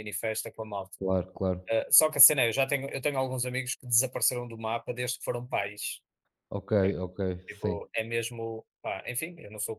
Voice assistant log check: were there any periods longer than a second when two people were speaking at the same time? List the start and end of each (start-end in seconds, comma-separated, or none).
none